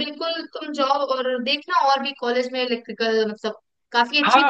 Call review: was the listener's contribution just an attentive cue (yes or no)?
no